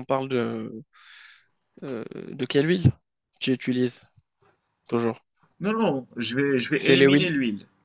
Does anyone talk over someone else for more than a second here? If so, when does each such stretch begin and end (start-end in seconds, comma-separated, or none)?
none